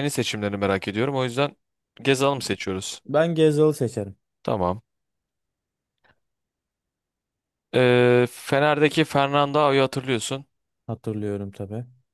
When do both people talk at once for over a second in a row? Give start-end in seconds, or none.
none